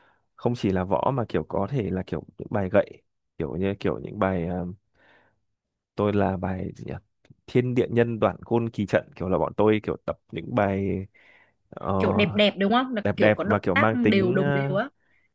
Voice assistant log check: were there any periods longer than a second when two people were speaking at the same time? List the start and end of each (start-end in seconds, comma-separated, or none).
13.0-14.8